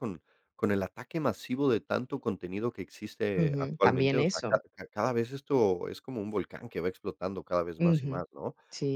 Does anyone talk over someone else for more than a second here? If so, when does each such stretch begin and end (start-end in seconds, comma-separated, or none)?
3.4-4.6